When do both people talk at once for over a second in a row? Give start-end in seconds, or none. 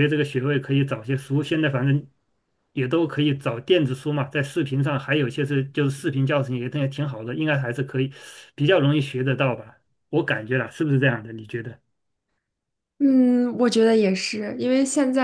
none